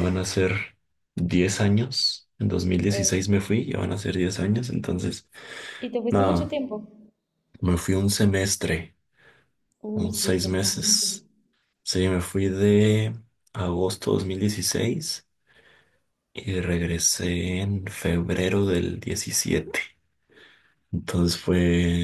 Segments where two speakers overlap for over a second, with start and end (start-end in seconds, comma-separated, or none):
9.9-11.2